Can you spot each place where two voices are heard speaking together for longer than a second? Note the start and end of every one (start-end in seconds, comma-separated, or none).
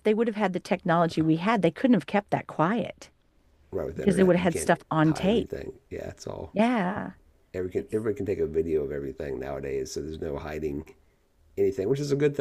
3.9-5.5